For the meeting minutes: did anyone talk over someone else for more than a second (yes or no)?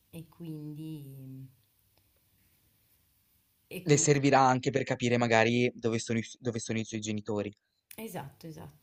no